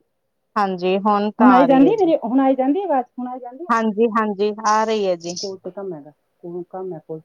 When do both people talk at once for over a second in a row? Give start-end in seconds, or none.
none